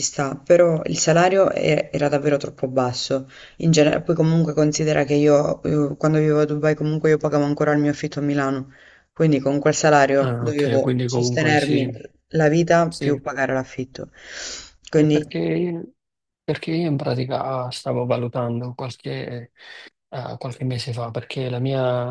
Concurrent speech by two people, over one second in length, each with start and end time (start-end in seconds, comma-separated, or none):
10.2-11.9